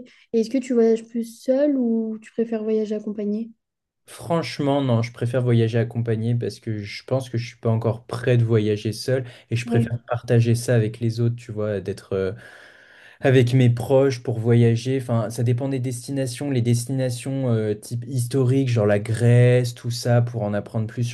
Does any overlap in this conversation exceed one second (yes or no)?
no